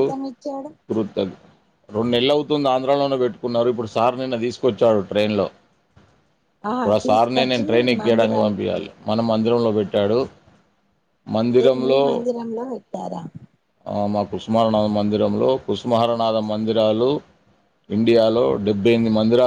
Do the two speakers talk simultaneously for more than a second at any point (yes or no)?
yes